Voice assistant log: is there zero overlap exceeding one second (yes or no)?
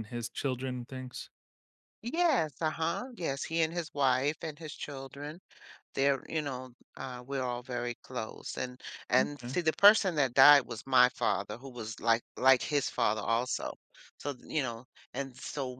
yes